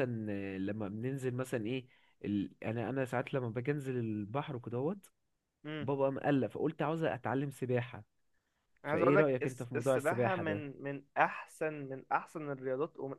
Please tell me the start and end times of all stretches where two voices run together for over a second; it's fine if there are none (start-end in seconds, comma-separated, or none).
8.9-10.7